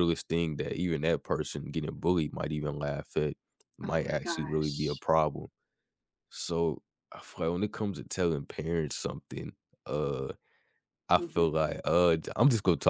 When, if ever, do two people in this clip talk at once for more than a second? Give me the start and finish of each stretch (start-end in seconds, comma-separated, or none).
3.8-5.0